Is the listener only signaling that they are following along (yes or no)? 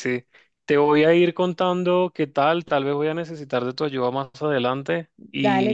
yes